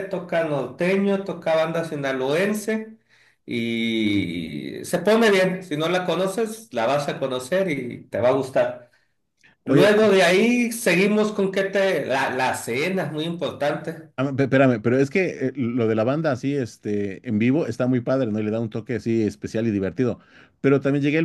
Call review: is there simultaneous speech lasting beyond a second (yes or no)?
no